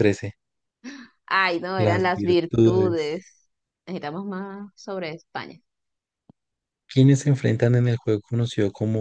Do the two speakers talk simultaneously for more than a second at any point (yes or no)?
yes